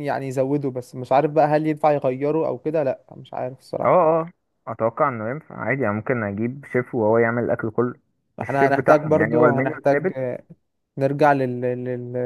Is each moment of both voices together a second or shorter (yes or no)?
no